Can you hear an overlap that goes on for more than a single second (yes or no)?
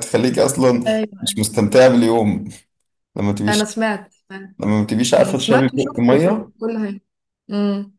yes